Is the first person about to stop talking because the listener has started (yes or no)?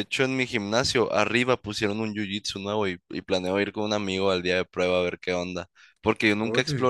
no